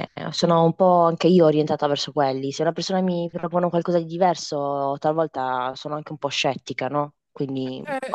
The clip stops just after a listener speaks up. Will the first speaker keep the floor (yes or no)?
no